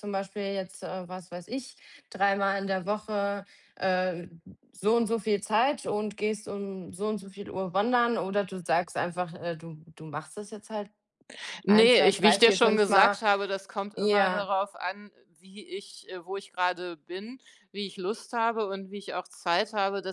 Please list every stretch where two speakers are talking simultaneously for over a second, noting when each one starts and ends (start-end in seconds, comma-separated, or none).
11.7-13.2